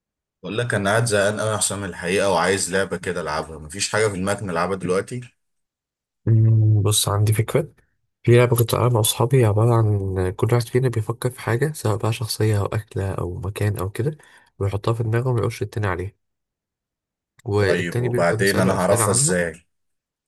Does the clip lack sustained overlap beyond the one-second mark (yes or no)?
no